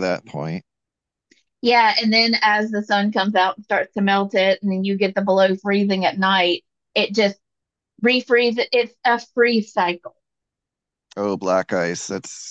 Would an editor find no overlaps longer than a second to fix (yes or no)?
yes